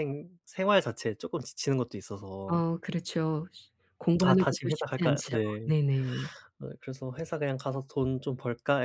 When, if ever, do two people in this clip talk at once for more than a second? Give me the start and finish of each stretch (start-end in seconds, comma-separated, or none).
4.2-5.7